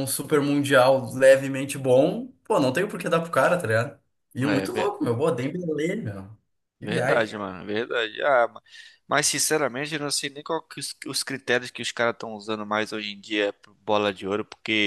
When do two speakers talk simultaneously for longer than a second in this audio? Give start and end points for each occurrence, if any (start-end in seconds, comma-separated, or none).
none